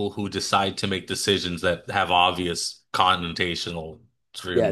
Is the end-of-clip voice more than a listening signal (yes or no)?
yes